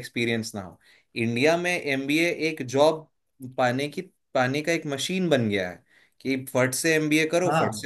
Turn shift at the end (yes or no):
no